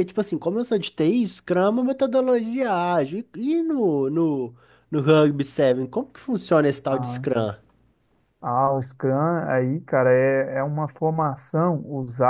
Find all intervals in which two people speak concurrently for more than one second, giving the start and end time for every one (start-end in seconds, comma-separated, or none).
none